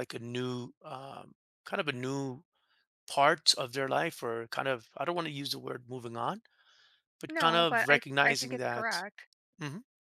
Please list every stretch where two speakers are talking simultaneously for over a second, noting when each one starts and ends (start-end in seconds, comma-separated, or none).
7.3-9.0